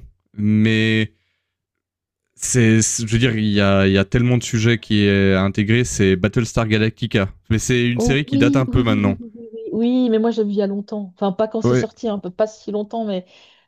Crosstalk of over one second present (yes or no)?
yes